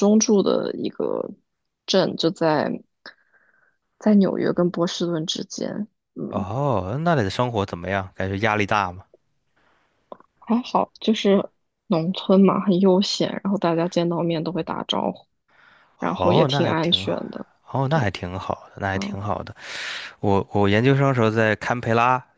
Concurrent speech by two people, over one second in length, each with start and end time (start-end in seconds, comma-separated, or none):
16.0-17.2